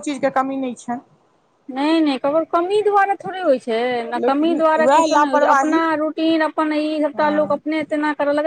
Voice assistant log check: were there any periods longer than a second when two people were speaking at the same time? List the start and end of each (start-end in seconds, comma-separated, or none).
4.2-5.8